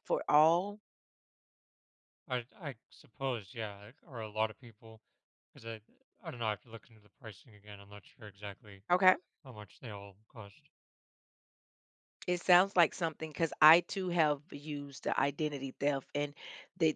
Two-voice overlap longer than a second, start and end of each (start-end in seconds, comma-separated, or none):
none